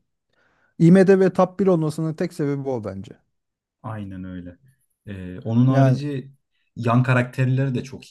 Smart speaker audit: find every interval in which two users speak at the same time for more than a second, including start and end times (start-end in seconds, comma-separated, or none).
none